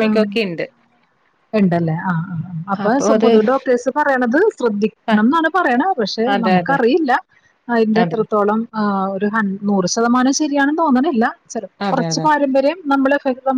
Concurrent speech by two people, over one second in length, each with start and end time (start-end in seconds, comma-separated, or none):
none